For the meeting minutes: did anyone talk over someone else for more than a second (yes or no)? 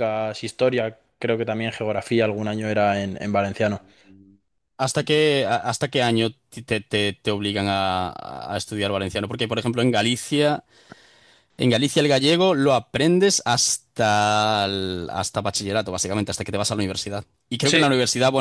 no